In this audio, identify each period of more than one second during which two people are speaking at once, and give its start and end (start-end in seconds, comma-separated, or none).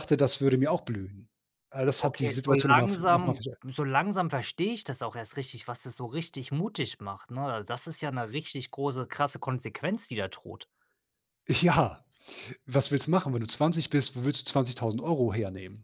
2.0-3.6